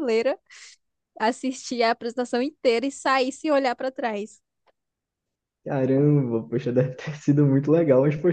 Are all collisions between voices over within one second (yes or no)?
yes